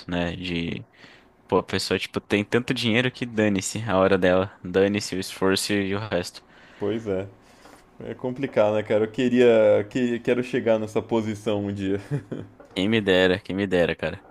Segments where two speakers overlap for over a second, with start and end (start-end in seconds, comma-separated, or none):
none